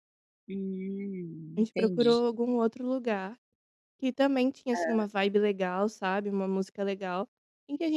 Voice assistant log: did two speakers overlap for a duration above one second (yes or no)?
no